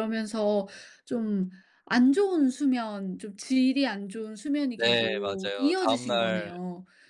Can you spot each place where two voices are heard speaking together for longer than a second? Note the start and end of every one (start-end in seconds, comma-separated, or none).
4.8-6.6